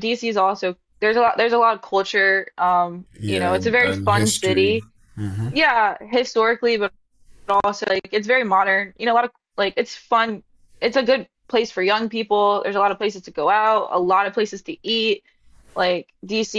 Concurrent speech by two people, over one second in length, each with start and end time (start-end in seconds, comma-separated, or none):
3.2-4.8